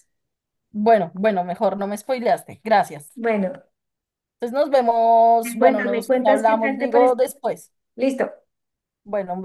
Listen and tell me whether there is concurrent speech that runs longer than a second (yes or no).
yes